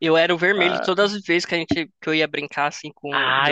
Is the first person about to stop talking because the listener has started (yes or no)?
yes